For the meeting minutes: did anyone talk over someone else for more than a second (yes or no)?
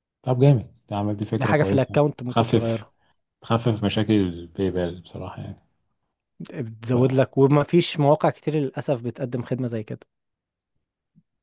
yes